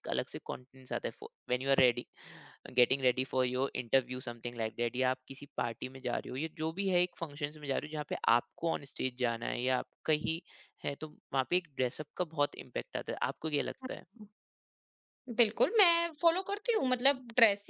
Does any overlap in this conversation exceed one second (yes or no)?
no